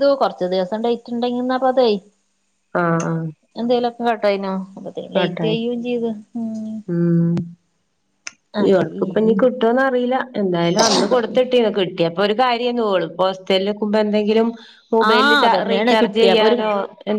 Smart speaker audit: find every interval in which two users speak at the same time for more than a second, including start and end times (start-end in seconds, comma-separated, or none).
15.1-16.6